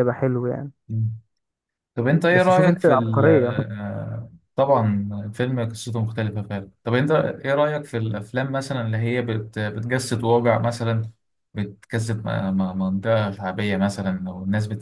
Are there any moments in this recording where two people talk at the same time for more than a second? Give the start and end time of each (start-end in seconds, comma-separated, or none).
2.3-3.6